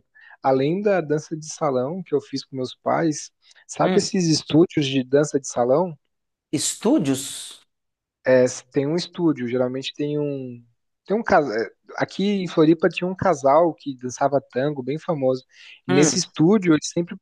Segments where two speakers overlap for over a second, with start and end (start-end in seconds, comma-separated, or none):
none